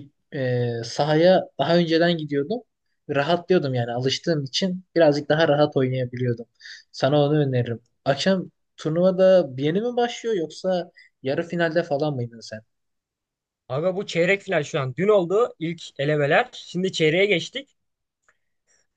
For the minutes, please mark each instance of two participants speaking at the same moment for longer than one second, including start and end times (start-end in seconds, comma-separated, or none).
none